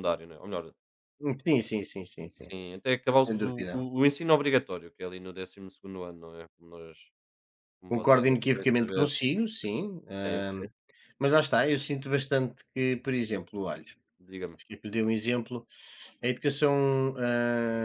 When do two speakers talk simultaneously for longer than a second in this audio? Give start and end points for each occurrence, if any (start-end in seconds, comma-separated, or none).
7.9-9.1